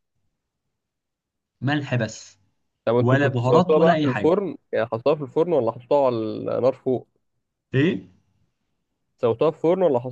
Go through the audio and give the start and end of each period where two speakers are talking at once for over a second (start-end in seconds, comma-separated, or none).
3.0-4.3